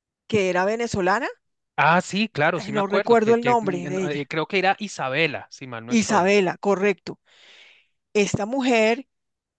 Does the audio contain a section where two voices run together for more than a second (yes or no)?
yes